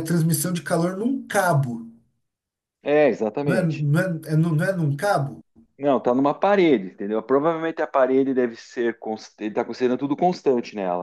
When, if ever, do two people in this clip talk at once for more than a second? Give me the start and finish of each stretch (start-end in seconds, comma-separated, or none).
none